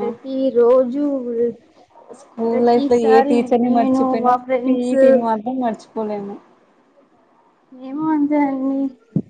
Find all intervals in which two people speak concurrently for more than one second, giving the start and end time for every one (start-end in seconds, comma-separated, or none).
2.5-5.0